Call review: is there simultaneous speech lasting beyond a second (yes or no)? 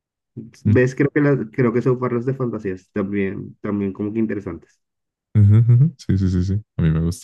no